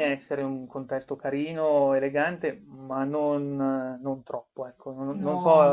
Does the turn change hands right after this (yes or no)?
no